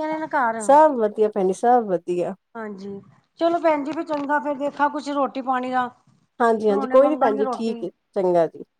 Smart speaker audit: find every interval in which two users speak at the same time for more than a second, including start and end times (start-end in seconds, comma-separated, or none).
6.5-7.8